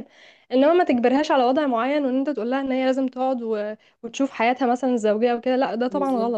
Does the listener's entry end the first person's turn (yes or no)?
yes